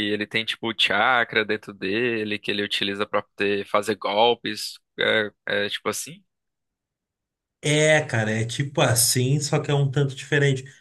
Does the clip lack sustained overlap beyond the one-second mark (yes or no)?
yes